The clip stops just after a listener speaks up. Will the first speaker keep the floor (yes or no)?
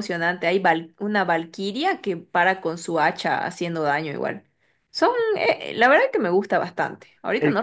yes